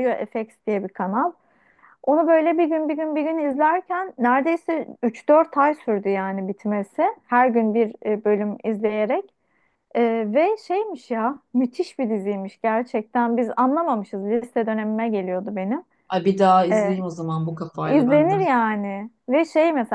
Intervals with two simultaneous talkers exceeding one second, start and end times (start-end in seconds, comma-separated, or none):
none